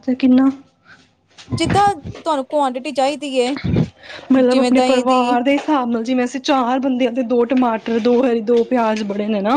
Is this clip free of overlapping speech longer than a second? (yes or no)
yes